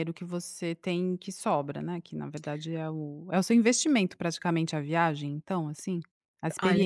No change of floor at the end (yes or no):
no